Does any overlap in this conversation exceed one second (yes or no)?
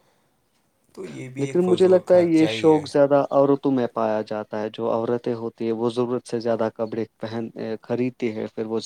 yes